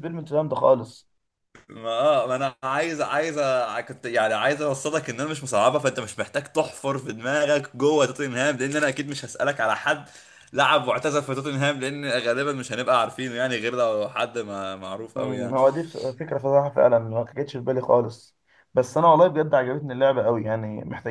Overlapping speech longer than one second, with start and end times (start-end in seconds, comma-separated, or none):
none